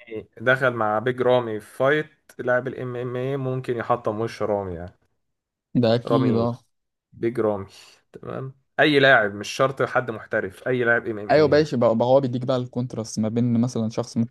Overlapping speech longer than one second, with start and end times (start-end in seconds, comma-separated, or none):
none